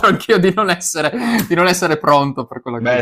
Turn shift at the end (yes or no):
yes